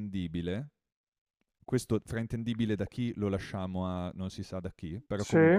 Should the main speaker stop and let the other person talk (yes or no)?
no